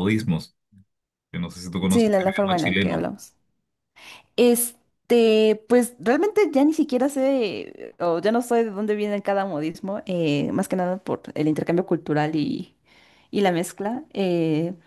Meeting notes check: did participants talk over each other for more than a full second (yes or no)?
yes